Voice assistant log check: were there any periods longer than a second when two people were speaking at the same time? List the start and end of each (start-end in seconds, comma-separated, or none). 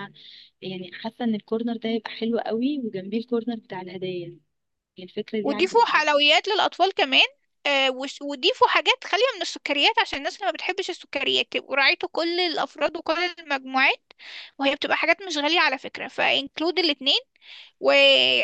none